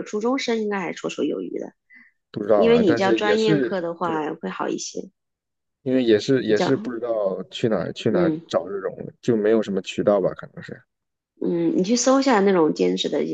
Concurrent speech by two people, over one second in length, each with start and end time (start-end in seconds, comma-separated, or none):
2.5-3.8